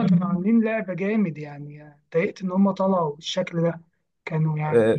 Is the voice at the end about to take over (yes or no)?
yes